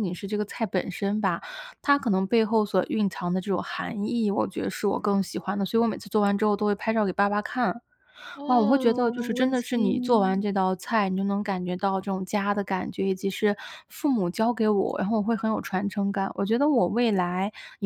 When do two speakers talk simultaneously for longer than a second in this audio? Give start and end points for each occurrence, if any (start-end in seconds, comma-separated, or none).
8.5-10.4